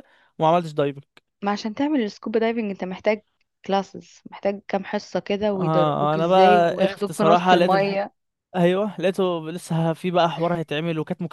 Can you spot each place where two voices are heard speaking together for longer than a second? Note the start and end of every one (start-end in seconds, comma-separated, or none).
5.5-8.0